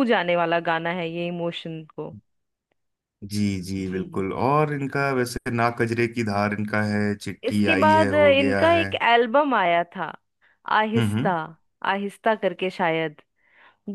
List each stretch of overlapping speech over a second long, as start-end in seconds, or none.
7.4-8.9